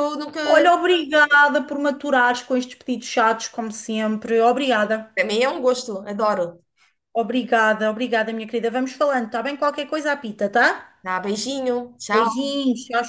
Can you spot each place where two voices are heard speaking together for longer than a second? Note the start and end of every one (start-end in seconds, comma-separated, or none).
none